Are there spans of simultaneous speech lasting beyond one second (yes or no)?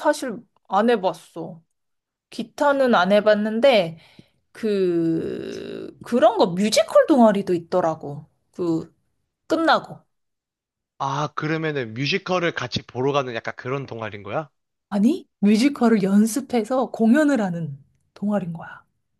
no